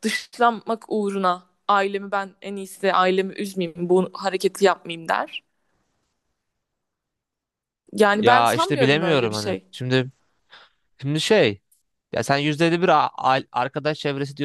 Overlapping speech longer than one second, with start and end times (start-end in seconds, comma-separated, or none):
8.1-9.7